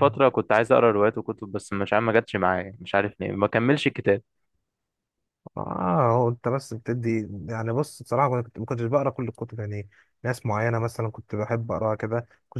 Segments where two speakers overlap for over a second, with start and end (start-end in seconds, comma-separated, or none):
none